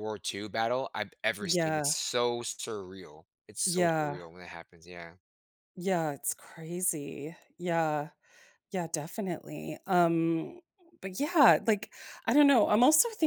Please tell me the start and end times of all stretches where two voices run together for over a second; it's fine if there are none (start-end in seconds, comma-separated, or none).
none